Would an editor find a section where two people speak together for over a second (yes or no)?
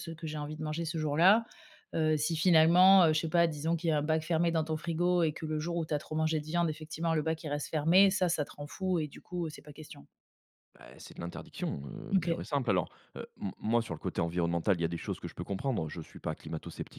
no